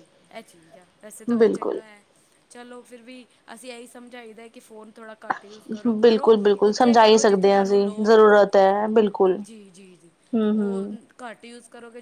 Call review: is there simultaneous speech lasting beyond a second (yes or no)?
yes